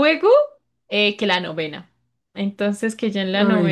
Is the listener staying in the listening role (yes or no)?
yes